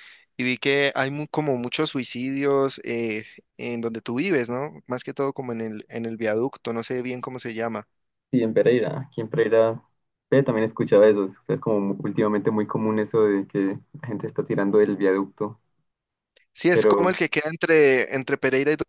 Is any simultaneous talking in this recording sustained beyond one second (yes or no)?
no